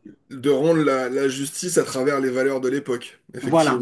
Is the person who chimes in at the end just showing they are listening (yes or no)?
no